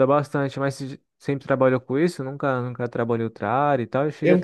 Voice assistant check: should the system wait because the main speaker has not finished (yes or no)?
yes